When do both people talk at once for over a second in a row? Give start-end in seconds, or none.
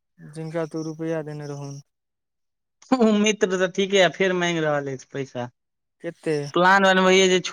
none